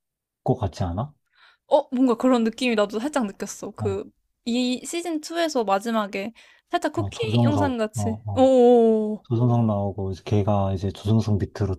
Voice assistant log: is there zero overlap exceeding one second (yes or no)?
no